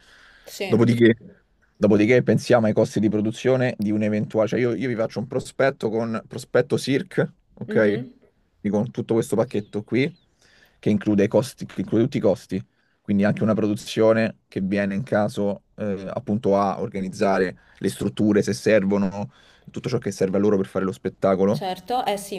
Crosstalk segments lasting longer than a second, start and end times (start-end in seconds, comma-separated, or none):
none